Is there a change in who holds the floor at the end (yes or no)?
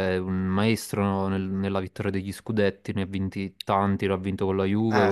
yes